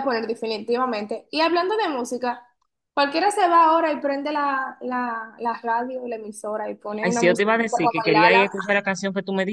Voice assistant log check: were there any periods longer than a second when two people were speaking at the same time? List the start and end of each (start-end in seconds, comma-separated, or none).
7.0-8.4